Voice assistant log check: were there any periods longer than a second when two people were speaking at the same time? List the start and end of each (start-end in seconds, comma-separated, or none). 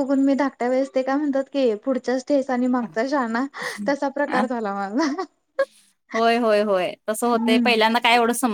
none